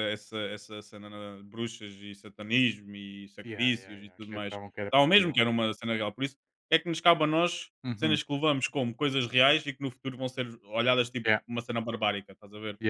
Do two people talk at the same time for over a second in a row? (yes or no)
yes